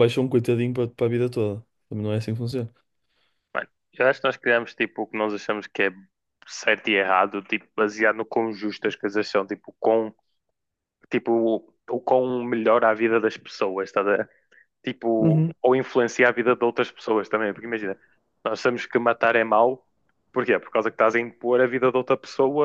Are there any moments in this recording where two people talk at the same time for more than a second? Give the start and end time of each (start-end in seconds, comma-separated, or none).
none